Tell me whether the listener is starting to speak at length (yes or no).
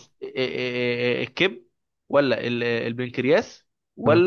no